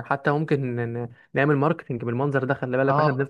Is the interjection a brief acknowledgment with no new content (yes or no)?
no